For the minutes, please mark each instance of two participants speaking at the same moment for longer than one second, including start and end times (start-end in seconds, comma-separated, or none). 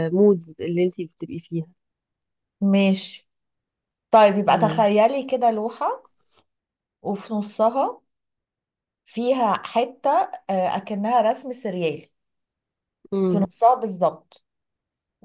none